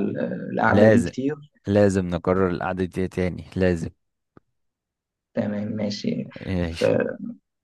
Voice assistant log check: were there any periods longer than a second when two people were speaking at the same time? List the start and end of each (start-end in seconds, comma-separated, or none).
none